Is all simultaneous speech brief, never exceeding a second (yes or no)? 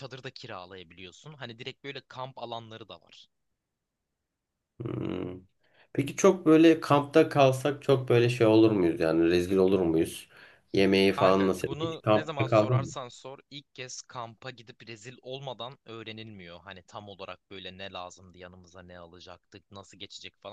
no